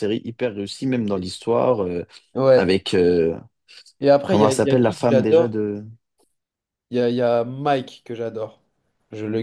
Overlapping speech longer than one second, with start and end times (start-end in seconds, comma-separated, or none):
4.2-5.6